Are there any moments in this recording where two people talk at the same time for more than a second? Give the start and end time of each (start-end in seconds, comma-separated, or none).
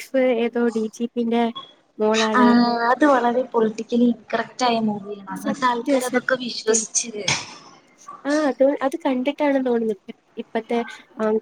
5.5-6.7